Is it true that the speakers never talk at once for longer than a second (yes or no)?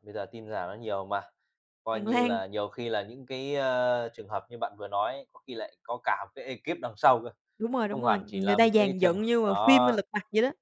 no